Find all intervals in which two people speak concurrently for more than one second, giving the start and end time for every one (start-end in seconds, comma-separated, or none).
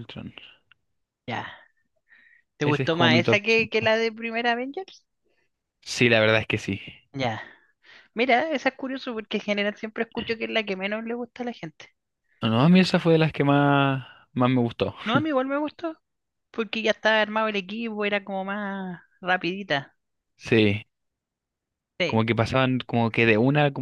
2.6-3.9